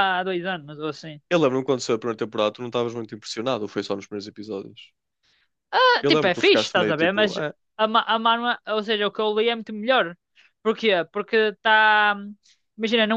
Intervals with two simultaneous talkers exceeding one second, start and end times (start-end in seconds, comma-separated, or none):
6.0-7.4